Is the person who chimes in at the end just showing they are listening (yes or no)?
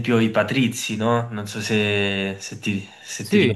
yes